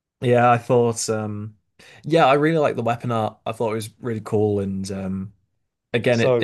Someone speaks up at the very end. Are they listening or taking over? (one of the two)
listening